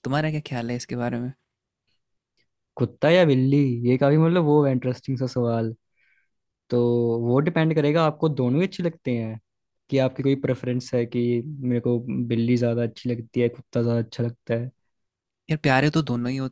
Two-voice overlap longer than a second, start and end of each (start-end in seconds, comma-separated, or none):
none